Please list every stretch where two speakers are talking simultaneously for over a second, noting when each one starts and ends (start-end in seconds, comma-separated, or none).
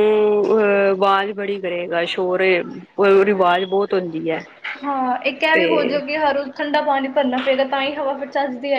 none